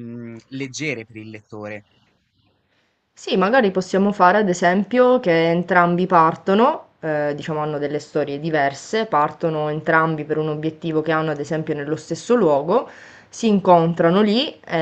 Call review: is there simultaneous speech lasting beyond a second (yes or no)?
no